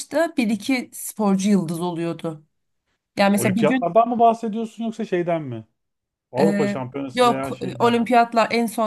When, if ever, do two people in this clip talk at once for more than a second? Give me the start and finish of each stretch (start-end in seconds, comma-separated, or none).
6.4-8.1